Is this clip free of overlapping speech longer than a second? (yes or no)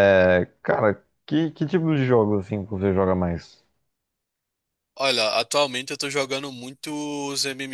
yes